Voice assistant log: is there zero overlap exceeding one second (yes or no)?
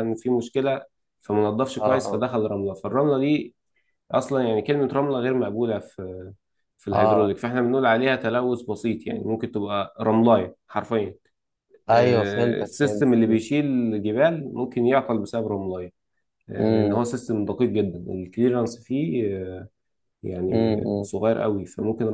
no